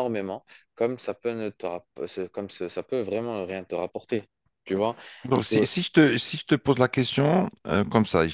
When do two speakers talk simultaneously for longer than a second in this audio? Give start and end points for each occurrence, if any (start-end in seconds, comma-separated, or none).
none